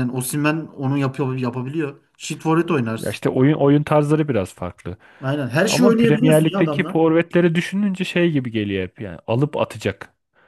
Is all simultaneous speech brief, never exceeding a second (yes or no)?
no